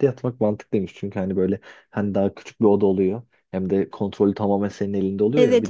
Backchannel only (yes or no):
yes